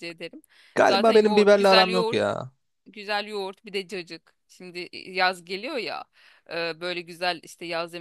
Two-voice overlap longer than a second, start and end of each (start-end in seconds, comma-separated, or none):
0.8-2.2